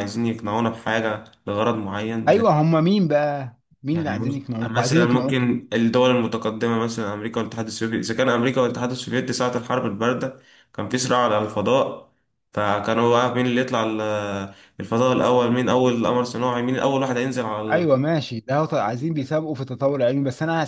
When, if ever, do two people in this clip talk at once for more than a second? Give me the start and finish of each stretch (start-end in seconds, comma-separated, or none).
3.9-5.4